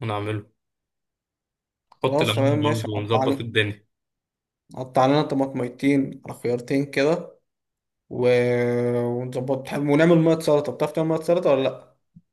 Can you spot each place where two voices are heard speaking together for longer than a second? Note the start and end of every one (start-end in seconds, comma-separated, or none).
2.0-3.5